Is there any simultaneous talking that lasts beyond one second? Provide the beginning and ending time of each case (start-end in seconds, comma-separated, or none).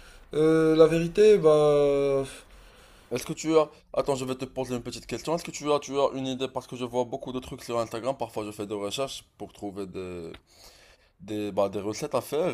none